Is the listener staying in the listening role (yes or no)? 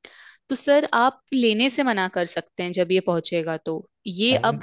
yes